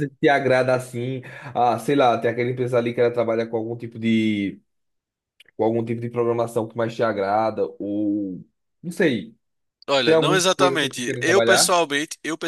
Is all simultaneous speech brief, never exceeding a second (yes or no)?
no